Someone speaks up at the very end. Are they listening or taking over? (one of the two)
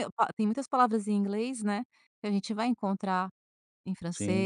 listening